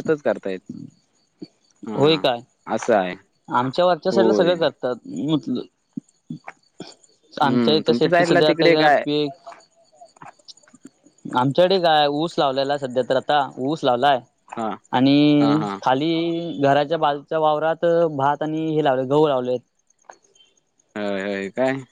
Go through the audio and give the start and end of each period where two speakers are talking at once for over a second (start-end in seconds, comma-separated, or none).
7.4-9.0